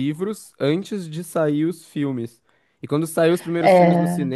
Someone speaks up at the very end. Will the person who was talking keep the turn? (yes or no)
yes